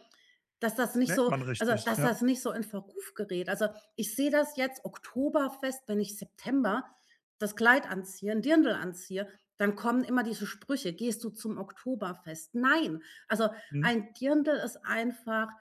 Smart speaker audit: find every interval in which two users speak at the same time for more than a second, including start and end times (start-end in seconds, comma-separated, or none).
0.9-2.2